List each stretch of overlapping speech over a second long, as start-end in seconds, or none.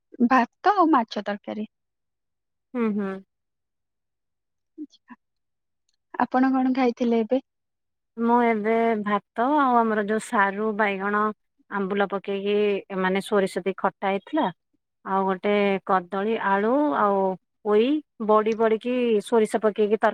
none